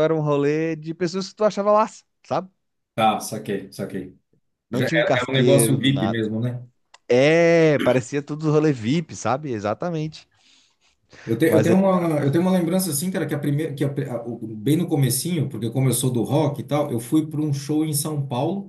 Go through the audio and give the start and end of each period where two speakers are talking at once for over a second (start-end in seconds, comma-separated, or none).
4.7-6.2